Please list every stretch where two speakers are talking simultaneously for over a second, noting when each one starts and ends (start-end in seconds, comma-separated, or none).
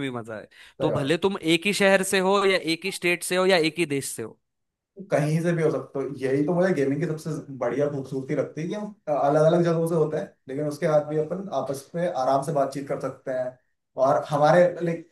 none